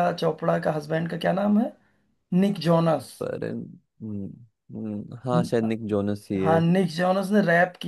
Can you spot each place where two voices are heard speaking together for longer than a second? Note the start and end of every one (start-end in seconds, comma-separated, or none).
none